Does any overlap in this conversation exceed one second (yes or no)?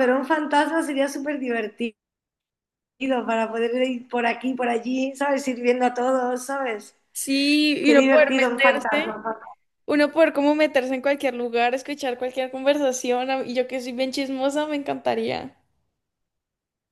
yes